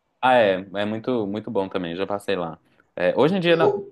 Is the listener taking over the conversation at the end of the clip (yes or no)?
no